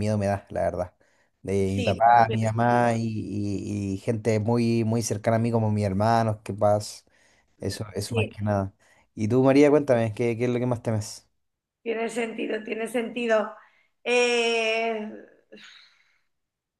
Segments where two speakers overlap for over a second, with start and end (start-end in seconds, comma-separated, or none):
1.6-3.0